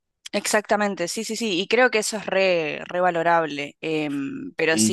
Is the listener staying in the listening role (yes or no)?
yes